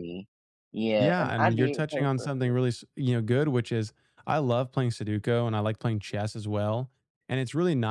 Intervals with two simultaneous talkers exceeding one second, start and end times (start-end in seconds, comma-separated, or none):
1.0-2.5